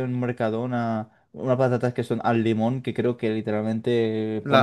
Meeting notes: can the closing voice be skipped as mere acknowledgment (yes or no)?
no